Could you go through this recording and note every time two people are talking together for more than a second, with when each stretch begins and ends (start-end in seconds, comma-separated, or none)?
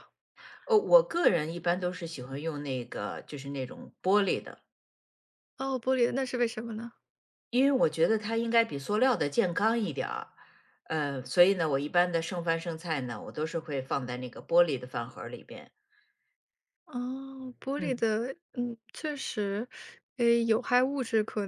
none